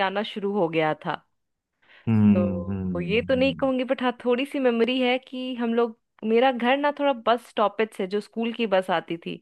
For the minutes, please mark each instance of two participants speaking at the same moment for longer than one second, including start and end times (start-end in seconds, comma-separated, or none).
2.3-3.7